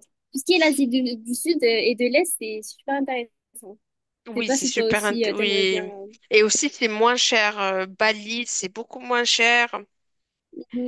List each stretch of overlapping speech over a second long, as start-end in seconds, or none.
4.3-5.9